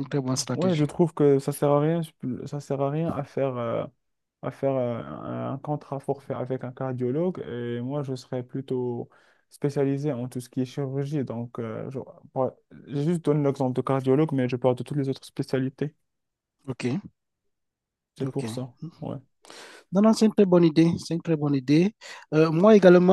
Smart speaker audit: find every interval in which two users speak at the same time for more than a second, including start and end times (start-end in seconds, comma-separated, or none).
none